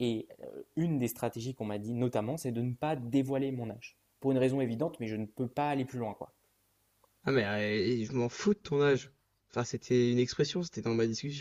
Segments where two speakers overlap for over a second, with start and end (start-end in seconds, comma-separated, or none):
none